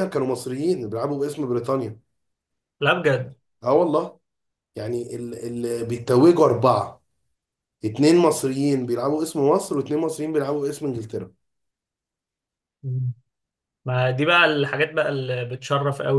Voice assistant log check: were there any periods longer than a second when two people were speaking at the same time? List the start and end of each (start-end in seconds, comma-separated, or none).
none